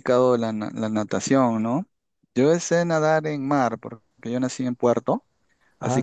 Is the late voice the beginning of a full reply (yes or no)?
no